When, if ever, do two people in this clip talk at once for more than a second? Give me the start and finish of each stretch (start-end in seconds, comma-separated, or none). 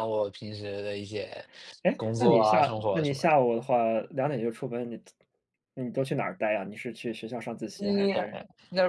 2.0-3.4